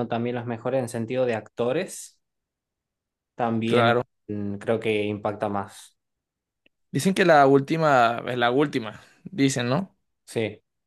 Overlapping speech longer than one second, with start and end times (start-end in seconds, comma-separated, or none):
none